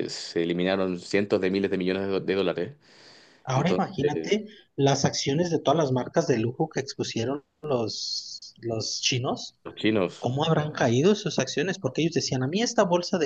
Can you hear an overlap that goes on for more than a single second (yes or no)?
no